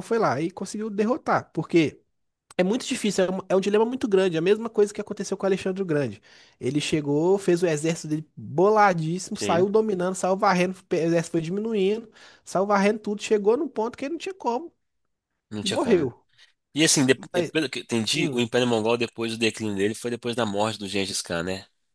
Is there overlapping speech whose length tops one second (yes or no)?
no